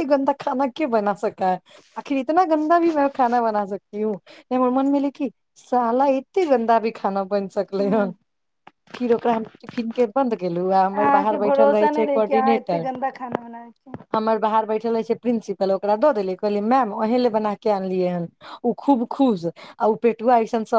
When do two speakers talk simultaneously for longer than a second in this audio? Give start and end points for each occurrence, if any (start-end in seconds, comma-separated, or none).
10.9-12.9